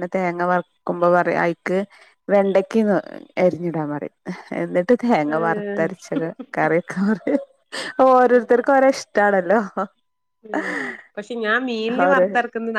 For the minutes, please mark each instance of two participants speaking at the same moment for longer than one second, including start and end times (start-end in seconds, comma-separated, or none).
none